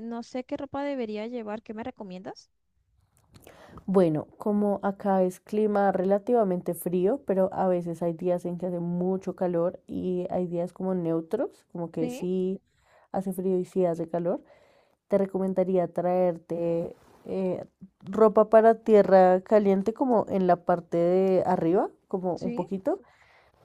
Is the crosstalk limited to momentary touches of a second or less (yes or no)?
yes